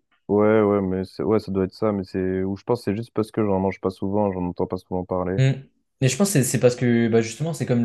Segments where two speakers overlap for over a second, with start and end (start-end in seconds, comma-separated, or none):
none